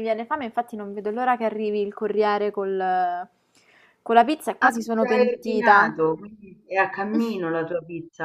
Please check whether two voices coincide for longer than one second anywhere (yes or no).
yes